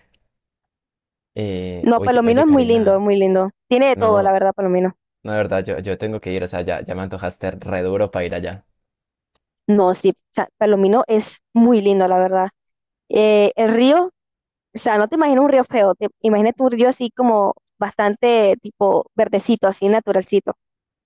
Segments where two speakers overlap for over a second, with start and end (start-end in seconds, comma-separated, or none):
1.8-3.0